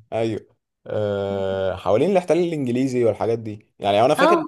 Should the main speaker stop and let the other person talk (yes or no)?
no